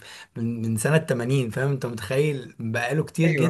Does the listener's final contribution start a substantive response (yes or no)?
no